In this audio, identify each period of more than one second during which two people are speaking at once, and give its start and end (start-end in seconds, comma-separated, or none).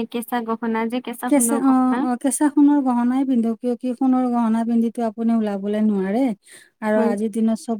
none